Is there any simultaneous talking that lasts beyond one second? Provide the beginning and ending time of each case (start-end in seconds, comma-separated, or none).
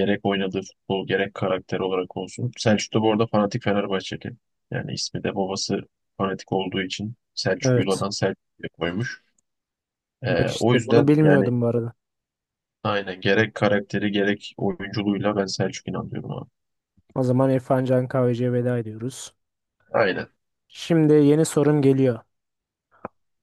10.3-11.5